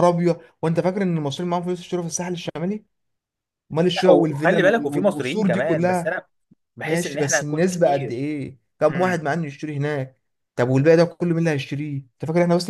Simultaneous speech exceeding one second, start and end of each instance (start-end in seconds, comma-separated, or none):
4.0-6.1, 6.8-8.2